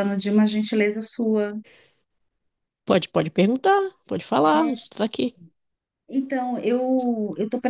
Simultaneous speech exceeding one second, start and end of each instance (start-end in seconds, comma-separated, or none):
none